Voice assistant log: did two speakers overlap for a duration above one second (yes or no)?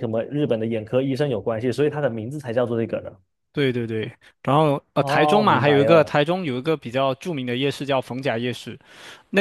yes